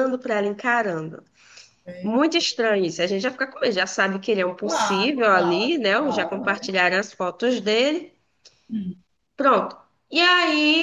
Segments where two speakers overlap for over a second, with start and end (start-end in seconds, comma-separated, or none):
4.6-6.7